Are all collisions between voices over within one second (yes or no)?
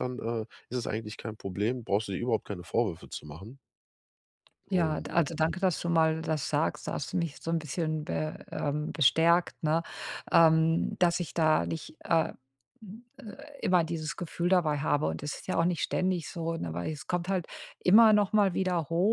yes